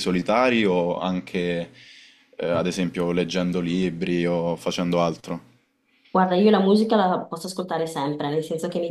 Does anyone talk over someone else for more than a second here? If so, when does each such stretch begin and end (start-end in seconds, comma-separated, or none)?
none